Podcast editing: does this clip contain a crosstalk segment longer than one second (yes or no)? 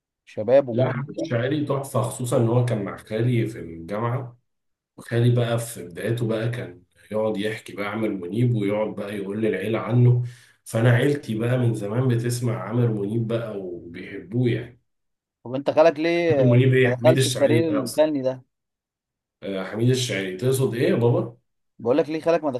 yes